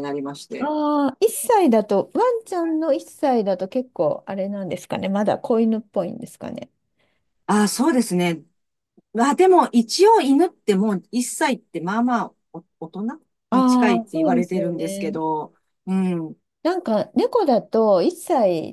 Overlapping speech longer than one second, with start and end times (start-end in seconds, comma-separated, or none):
13.5-15.2